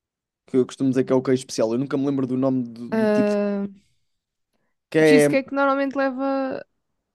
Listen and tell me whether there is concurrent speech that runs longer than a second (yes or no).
no